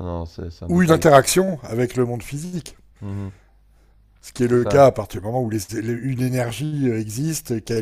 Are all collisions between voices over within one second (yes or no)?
yes